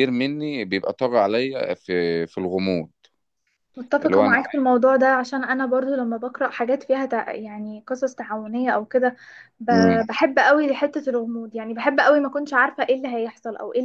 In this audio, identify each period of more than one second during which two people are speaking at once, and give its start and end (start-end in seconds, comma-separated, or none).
none